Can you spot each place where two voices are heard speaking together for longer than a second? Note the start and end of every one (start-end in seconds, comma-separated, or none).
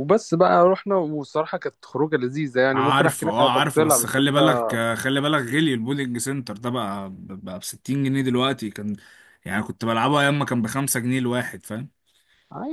2.7-4.4